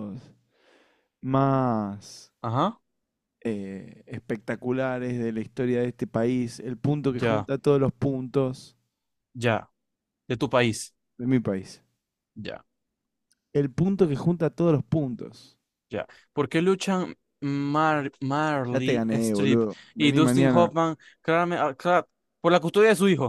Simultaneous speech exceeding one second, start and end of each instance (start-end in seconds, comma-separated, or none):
18.7-20.7